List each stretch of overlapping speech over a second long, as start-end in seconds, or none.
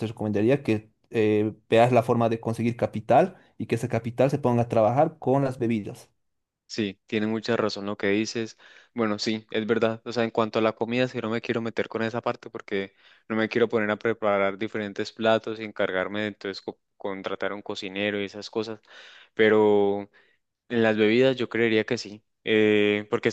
none